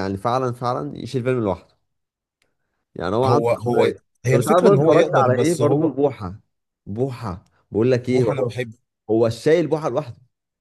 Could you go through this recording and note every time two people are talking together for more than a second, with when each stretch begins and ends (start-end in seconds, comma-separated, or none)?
3.2-5.9